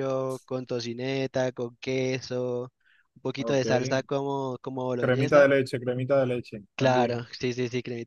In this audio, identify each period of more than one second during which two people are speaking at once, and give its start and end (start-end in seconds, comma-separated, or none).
none